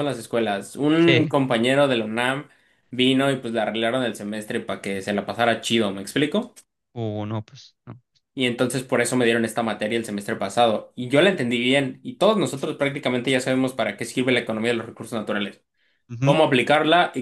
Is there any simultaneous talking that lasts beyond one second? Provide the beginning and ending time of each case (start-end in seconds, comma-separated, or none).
none